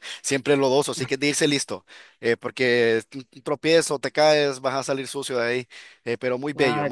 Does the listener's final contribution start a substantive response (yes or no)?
no